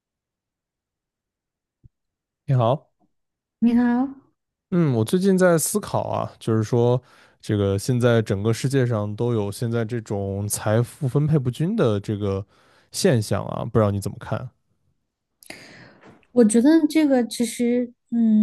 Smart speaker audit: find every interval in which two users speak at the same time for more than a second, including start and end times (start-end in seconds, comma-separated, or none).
none